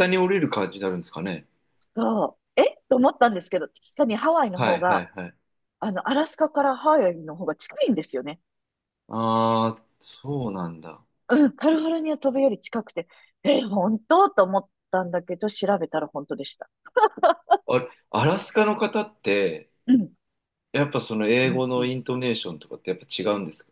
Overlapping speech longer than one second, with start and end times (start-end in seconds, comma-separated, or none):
none